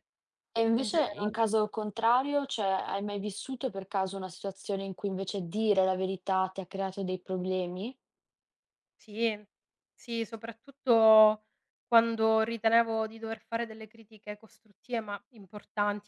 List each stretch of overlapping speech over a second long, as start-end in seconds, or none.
none